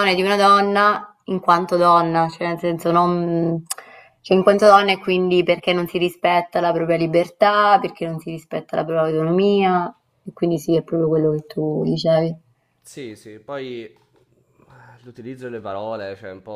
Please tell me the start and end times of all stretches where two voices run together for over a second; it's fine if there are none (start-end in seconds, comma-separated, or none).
none